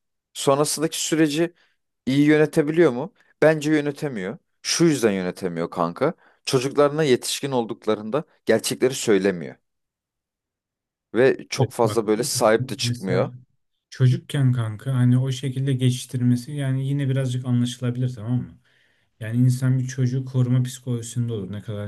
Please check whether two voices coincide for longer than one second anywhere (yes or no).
yes